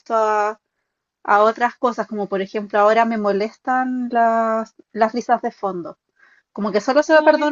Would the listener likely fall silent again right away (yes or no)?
yes